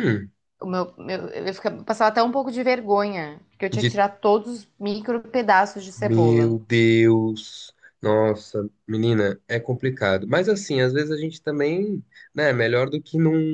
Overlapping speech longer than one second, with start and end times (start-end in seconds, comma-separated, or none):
none